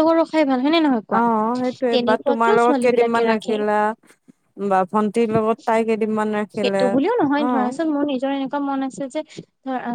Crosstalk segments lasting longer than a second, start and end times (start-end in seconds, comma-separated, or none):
1.9-3.5